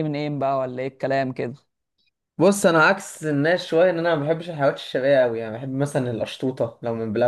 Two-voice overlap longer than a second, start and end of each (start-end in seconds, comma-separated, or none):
none